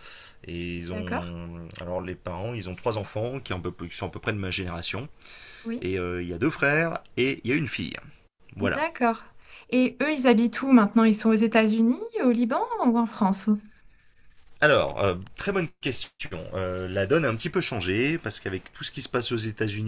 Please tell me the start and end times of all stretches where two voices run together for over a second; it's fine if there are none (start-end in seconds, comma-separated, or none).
none